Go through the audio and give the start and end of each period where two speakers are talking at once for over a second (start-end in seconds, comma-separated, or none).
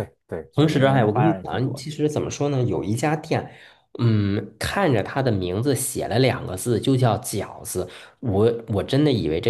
0.5-1.9